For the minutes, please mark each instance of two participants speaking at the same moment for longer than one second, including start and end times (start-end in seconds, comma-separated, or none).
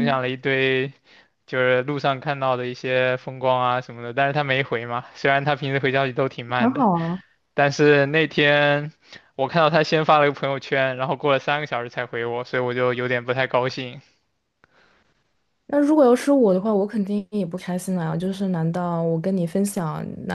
none